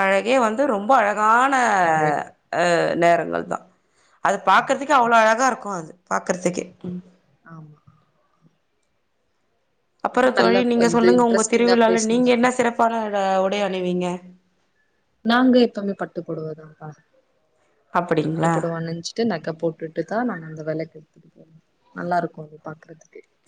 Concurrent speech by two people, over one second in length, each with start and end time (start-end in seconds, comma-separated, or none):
10.2-12.4